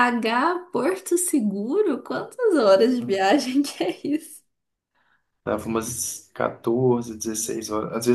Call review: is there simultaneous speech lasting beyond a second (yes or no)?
no